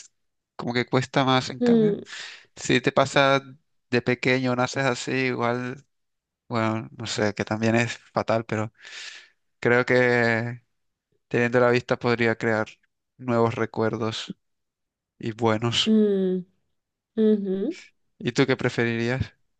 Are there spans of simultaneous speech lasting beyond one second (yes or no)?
no